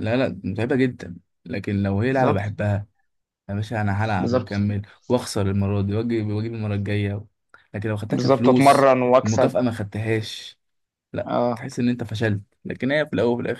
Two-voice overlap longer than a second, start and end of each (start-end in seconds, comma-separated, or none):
8.1-9.6